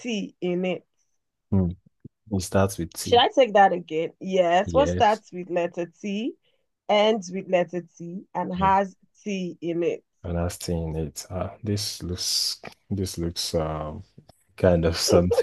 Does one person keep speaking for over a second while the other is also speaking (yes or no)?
no